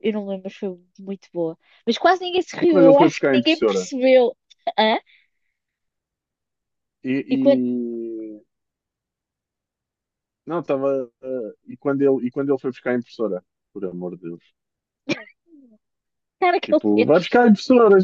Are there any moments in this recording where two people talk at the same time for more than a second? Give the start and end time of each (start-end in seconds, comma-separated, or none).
2.6-3.9